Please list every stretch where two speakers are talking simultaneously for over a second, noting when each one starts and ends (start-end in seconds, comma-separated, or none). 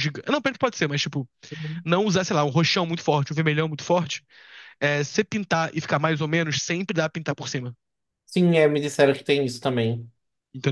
none